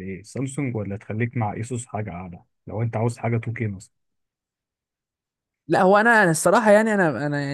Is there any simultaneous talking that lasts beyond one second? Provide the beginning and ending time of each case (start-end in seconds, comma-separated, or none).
none